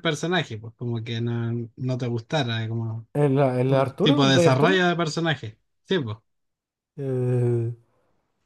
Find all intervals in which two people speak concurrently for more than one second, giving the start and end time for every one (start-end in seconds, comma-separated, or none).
3.7-4.9